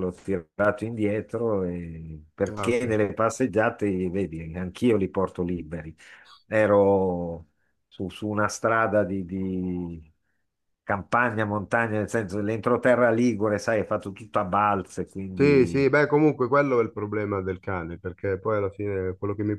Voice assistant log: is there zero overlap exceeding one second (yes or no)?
yes